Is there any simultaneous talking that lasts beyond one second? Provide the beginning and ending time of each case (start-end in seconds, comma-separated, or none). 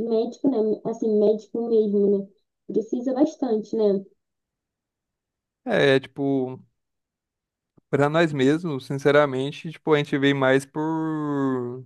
none